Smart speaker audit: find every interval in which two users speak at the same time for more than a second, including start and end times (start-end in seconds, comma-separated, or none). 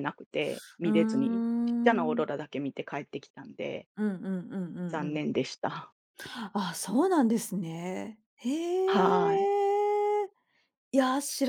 0.8-2.3